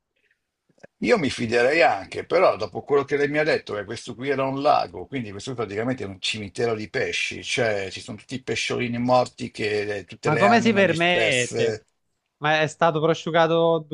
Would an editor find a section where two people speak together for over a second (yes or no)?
yes